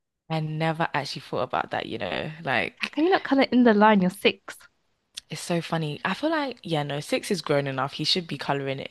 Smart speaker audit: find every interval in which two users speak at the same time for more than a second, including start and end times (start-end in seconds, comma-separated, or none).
none